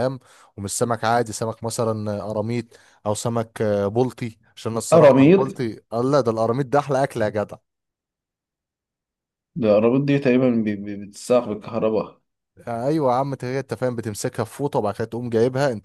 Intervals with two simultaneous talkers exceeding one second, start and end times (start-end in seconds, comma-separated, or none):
none